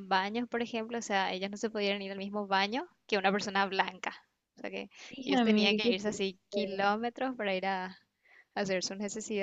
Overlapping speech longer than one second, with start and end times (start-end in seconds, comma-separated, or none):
5.2-6.8